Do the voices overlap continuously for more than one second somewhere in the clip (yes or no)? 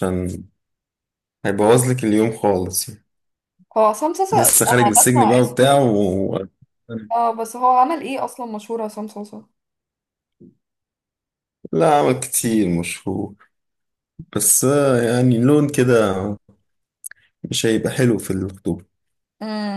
yes